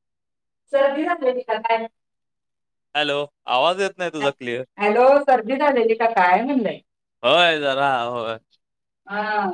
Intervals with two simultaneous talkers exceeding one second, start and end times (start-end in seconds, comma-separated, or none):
none